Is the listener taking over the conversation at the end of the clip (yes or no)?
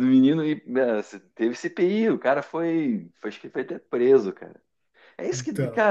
no